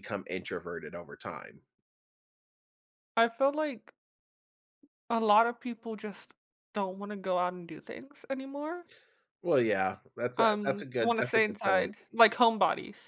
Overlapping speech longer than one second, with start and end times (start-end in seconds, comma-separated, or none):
10.4-11.9